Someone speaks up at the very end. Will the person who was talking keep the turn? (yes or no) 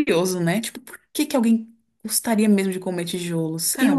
no